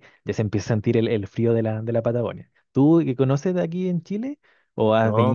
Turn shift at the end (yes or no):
yes